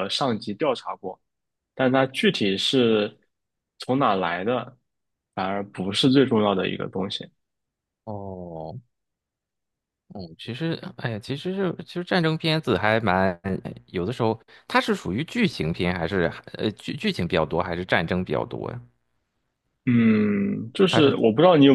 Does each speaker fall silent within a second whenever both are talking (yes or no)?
yes